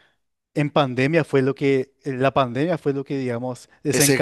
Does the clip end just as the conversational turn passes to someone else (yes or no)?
yes